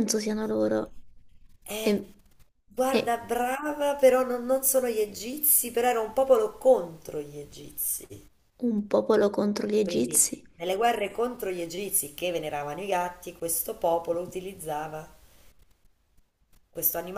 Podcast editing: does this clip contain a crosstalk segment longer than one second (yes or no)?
no